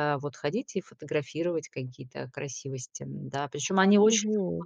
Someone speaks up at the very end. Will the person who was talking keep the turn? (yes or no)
no